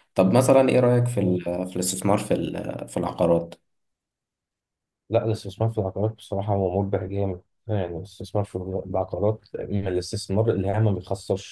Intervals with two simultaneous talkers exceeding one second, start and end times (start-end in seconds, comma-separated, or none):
none